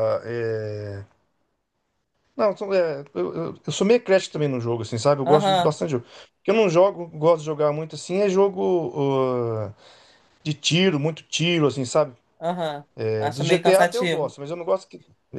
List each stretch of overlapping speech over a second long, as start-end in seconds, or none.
12.9-14.4